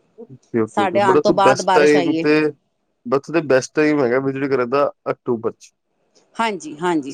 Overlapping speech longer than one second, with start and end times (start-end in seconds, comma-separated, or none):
0.8-2.3